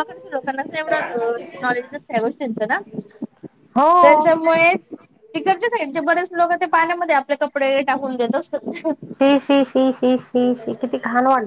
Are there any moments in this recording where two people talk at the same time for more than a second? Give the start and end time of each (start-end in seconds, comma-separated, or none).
none